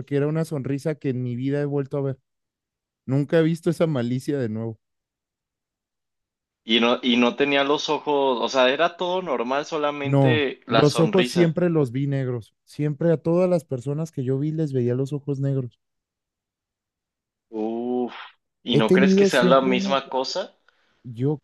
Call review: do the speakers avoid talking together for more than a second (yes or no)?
no